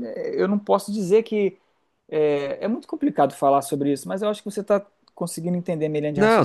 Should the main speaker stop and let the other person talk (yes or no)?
yes